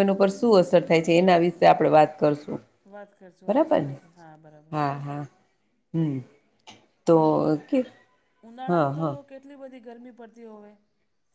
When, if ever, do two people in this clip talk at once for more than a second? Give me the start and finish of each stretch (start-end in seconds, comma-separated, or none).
none